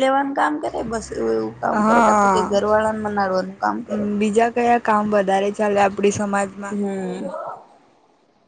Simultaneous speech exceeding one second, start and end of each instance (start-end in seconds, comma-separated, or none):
none